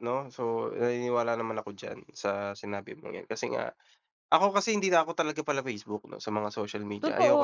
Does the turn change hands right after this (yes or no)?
yes